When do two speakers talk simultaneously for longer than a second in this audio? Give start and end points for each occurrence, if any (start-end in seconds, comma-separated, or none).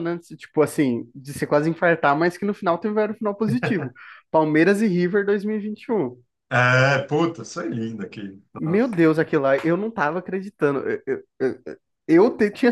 none